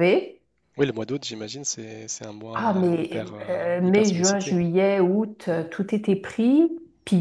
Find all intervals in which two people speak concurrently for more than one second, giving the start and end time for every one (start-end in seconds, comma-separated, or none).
2.5-4.6